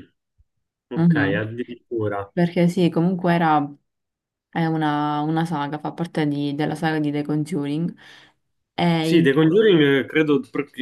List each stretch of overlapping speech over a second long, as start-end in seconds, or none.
none